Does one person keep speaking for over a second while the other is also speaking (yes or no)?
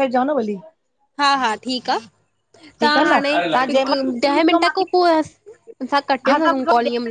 yes